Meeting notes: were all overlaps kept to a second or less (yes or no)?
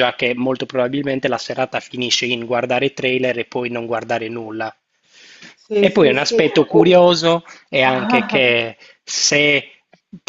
no